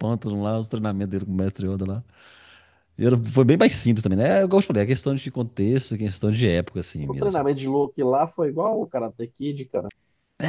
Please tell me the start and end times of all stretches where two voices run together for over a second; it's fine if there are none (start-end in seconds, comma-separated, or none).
none